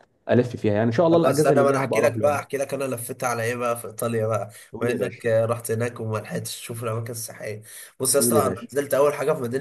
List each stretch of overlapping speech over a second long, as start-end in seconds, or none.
1.1-2.4